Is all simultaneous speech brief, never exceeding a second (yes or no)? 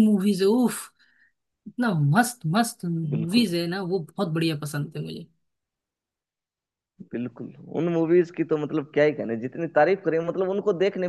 yes